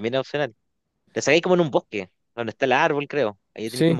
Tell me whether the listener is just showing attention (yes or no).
no